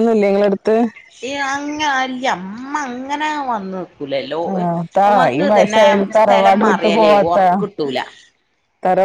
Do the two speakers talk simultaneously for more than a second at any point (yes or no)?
yes